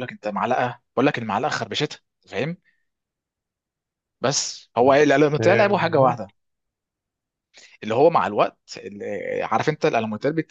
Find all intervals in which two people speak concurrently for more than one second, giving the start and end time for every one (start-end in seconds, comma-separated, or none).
4.8-6.3